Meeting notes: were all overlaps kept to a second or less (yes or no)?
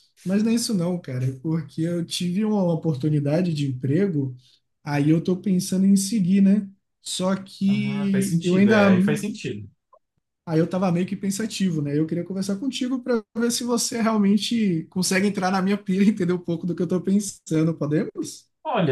no